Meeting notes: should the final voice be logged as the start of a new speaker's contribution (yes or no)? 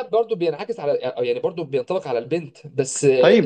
yes